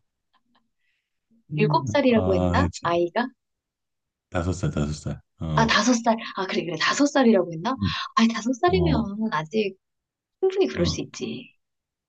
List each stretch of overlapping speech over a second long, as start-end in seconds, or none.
1.6-3.0